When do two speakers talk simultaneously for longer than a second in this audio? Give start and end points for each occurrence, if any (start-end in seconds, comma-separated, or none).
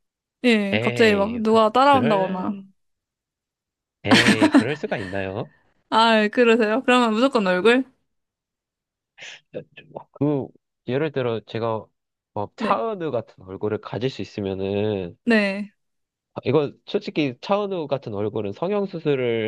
0.7-2.6